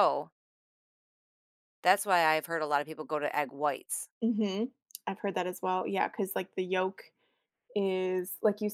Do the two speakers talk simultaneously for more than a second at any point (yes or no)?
no